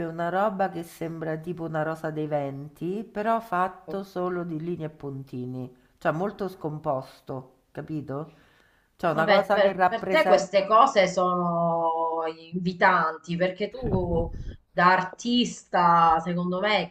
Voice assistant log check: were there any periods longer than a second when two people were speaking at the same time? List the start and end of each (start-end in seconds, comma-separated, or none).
9.1-10.7